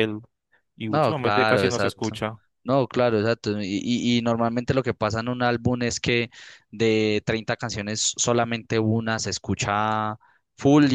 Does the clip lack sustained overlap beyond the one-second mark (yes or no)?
no